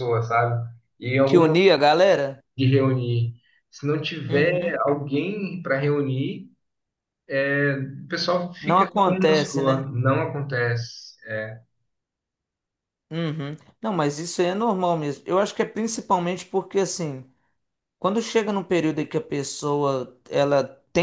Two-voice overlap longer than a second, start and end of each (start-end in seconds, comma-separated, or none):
8.6-9.9